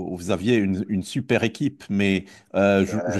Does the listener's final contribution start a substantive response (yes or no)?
no